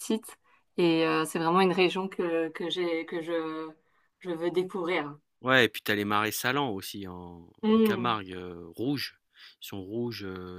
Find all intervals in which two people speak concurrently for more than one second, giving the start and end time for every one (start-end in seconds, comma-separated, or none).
none